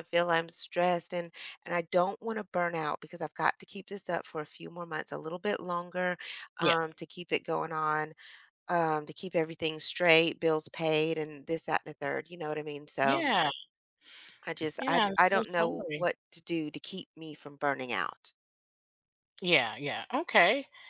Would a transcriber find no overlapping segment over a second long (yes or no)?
no